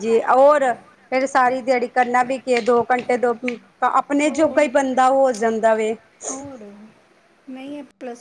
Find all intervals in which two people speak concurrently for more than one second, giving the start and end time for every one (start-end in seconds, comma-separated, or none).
none